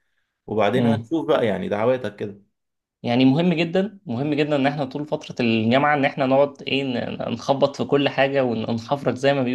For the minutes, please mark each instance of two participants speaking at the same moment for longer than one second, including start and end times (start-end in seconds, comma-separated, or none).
none